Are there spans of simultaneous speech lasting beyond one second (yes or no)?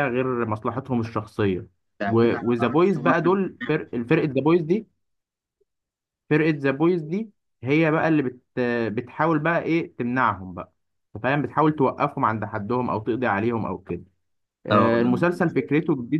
yes